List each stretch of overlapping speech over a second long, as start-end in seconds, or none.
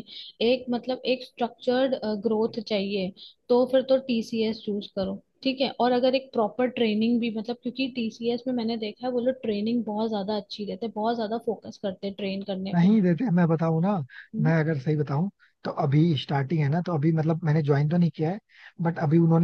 none